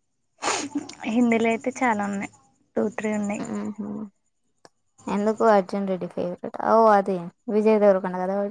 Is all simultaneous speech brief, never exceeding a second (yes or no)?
yes